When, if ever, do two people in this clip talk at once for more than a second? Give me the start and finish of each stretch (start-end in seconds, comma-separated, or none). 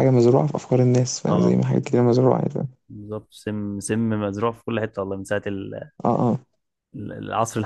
none